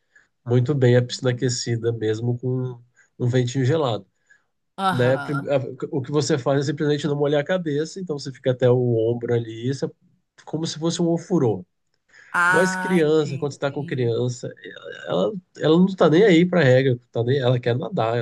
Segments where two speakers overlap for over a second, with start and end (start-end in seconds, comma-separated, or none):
12.5-14.1